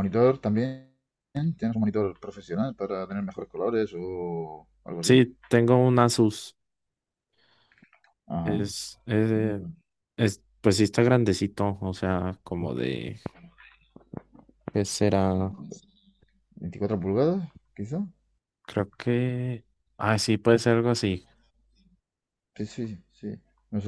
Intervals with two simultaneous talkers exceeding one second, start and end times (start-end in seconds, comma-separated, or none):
none